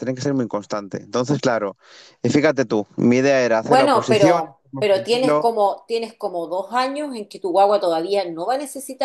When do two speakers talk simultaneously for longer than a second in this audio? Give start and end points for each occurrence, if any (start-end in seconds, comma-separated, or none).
3.6-5.5